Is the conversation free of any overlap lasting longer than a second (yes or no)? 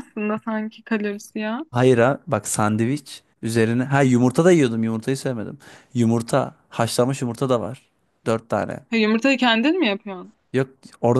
yes